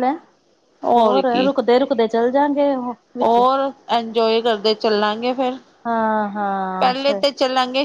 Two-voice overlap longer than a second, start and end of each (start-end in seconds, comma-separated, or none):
none